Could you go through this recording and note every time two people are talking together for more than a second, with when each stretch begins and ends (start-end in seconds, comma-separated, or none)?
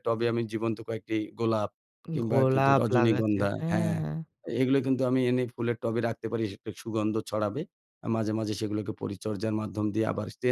2.2-4.0